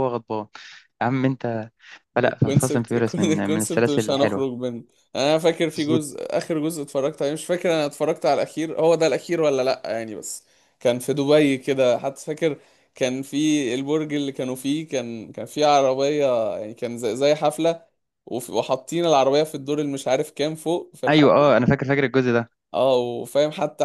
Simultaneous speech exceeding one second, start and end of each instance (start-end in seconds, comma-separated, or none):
2.2-4.5